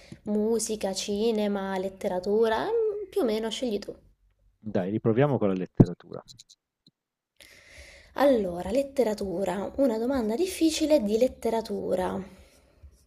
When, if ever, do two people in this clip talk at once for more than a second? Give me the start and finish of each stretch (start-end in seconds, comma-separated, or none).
none